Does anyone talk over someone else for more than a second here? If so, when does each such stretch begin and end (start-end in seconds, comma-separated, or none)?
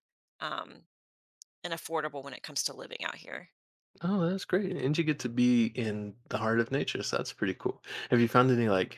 none